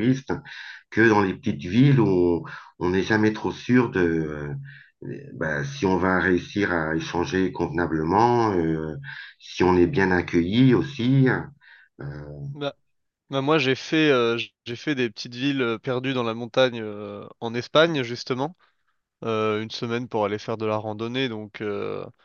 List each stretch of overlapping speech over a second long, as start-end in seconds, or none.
none